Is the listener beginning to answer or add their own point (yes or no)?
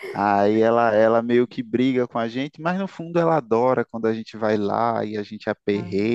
no